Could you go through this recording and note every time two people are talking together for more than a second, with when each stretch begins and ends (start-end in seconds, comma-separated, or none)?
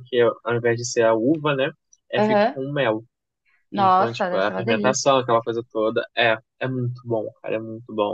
3.7-5.1